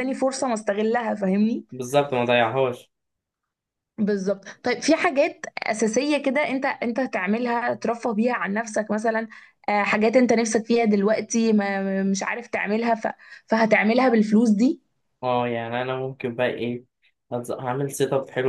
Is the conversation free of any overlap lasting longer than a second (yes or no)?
yes